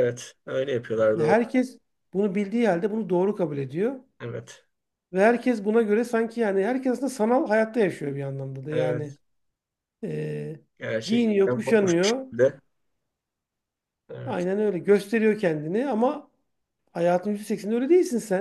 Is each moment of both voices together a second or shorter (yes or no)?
no